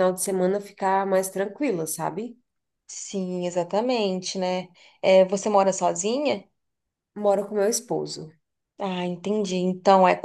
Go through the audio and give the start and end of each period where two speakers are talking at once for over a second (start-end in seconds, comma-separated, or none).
none